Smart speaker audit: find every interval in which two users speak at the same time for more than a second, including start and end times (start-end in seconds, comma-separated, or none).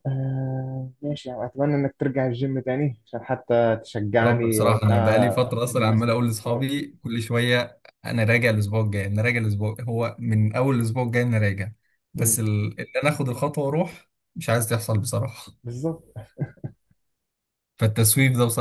4.2-6.6